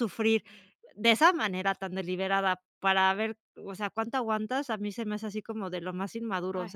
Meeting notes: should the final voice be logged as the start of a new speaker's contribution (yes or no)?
yes